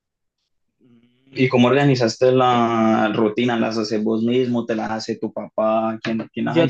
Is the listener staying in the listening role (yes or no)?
no